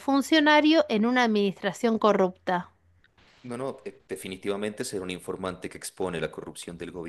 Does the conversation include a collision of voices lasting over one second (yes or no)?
no